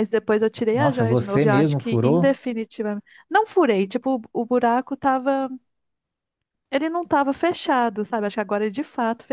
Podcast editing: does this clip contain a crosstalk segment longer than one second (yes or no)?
yes